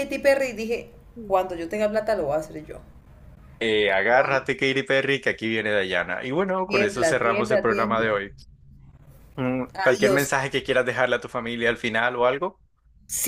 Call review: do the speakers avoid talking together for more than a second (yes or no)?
no